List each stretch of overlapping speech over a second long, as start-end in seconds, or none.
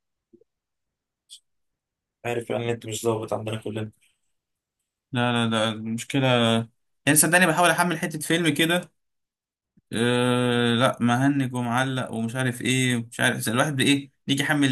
none